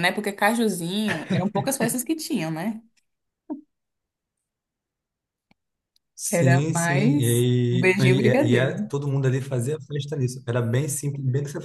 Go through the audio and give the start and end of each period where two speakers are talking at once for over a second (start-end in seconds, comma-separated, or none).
6.3-8.9